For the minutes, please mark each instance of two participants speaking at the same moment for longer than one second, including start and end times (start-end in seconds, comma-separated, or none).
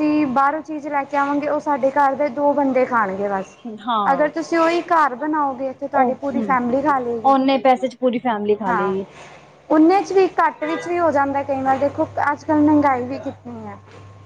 none